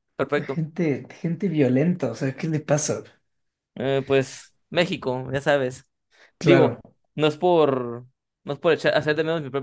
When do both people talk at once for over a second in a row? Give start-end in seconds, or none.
none